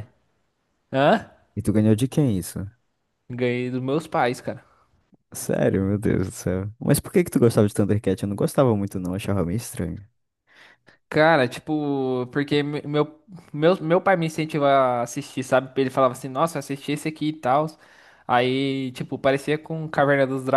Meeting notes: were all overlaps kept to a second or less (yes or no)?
yes